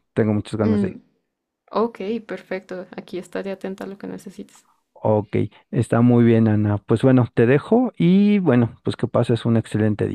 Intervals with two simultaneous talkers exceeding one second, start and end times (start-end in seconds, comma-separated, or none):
none